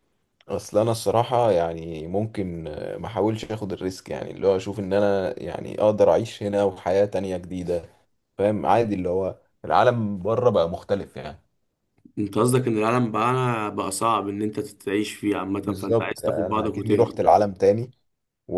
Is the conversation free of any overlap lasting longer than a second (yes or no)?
no